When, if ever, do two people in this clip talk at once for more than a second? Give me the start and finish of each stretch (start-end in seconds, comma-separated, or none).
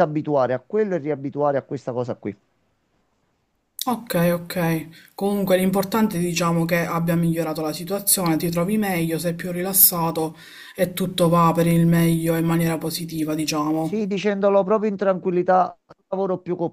none